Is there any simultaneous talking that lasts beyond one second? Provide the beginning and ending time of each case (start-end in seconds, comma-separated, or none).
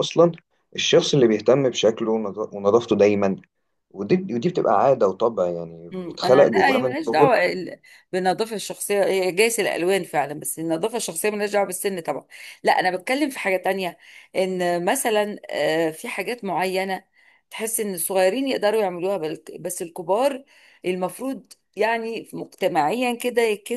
5.9-7.4